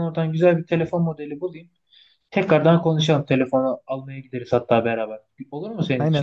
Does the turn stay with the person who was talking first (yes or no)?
no